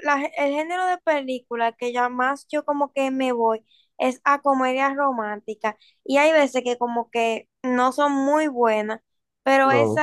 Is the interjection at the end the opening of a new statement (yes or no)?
no